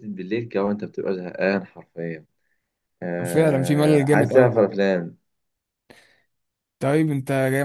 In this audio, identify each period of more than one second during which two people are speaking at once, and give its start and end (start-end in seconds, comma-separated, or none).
3.3-4.5